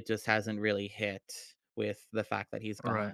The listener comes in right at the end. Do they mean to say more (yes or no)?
yes